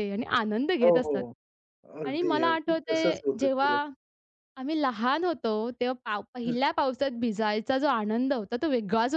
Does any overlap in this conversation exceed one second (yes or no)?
yes